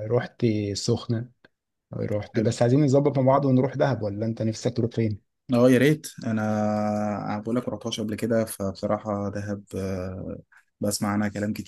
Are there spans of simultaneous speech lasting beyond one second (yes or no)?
no